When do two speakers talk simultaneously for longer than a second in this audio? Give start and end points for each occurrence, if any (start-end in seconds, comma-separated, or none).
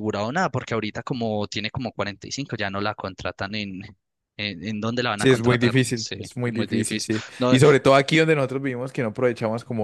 5.2-7.6